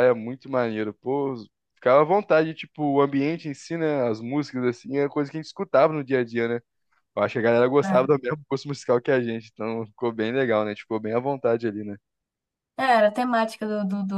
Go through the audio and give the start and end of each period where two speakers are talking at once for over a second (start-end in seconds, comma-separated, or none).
none